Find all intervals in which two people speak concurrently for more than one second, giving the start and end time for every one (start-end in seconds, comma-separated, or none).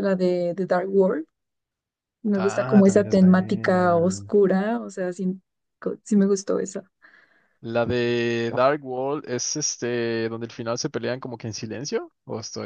2.4-4.3